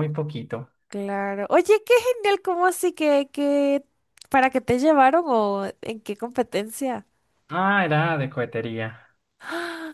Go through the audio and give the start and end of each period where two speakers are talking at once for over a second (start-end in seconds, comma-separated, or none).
none